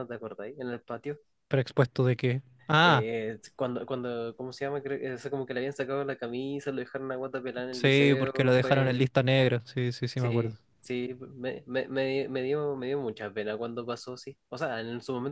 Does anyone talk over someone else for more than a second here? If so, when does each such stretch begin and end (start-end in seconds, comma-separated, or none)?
7.7-9.1